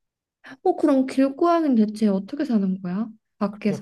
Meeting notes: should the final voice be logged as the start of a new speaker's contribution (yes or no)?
yes